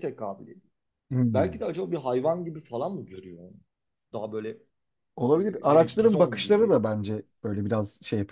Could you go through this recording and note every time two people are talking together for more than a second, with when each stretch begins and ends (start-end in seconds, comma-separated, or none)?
5.3-6.8